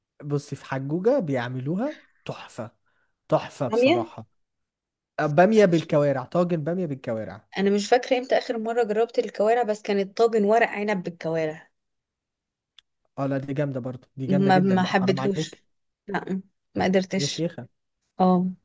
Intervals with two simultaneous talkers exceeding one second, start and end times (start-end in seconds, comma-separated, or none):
14.3-15.6